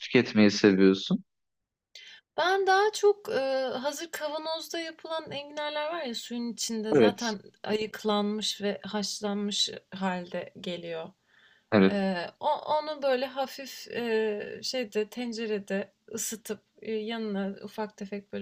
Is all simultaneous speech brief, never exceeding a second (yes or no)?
yes